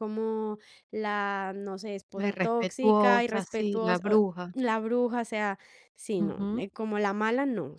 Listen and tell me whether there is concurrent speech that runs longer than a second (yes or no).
yes